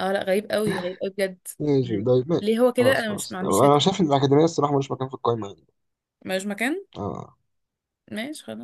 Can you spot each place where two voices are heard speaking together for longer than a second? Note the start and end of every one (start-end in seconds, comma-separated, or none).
1.8-3.8